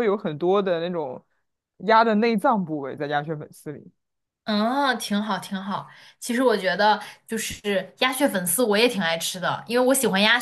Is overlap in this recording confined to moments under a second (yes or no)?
yes